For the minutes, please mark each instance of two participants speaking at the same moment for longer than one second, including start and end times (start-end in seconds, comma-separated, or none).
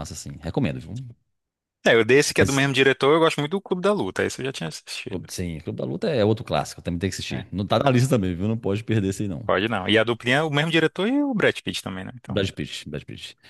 none